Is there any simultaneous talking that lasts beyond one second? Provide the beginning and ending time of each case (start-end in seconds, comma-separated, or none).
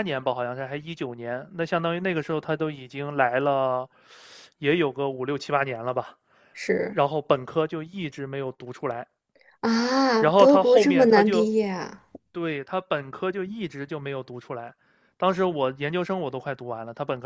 10.2-11.5